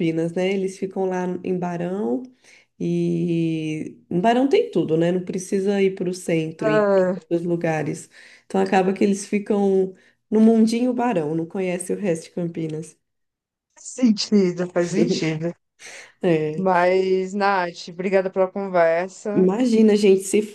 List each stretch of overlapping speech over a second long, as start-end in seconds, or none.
none